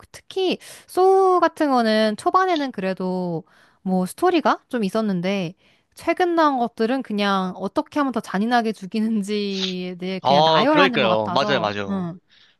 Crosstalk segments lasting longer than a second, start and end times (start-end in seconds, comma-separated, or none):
10.2-12.1